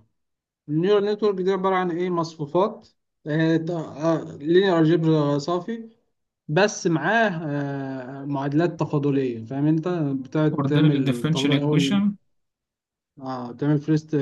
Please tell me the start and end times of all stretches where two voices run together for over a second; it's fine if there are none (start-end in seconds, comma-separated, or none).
10.5-12.0